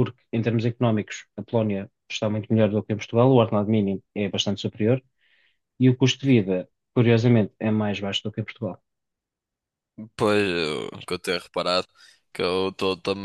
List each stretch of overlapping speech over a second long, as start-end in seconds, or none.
none